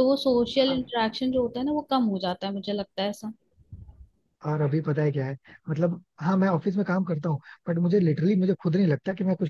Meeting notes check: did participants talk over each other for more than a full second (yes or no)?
no